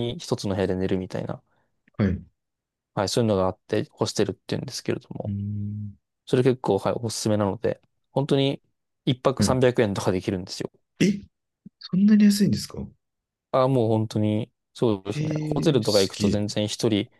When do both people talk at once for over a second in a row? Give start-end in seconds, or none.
15.1-16.4